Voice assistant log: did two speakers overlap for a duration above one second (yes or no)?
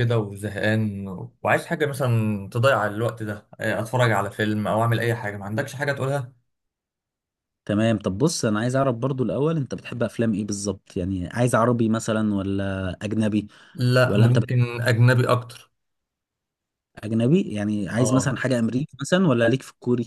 no